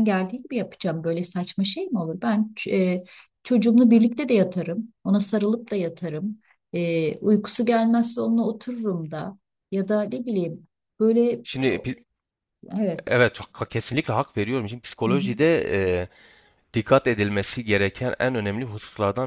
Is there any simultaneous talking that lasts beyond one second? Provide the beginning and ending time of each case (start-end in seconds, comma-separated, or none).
none